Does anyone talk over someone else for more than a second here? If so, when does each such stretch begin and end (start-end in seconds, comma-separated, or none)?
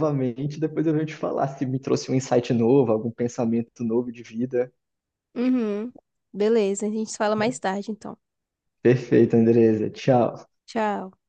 none